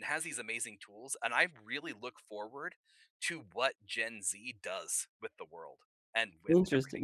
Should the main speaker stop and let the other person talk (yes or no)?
yes